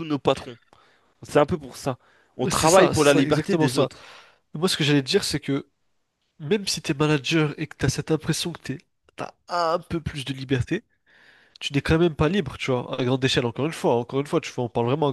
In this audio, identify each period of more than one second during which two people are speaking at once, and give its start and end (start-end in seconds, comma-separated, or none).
2.5-3.9